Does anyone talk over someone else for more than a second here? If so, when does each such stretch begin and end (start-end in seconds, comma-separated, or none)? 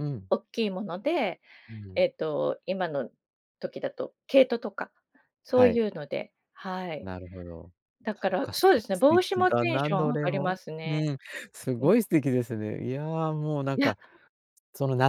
8.2-11.1